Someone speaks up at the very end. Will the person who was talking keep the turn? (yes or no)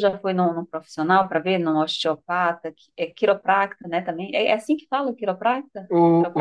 no